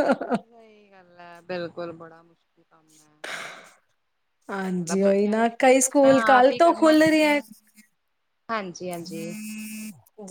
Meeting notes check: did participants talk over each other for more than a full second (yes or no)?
yes